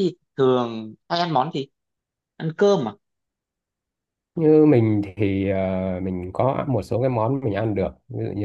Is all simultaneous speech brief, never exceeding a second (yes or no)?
yes